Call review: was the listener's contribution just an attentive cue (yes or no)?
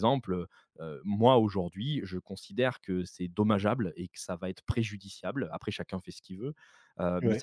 yes